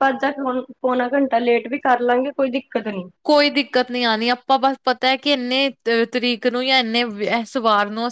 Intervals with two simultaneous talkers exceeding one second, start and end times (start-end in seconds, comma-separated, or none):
none